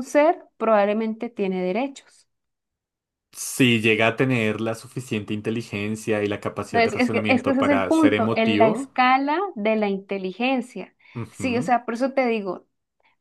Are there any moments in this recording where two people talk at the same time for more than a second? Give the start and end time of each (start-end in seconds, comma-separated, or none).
6.7-8.9